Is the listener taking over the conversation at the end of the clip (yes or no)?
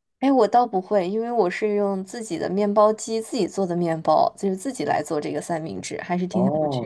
yes